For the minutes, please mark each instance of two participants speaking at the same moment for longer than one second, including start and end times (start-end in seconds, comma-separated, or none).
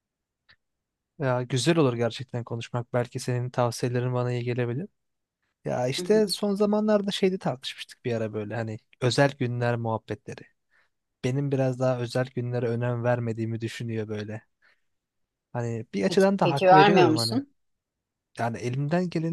16.1-17.4